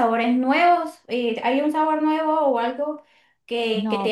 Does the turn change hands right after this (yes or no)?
no